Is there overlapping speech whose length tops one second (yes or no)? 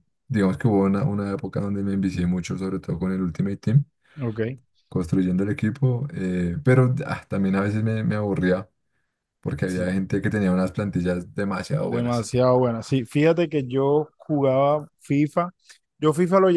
no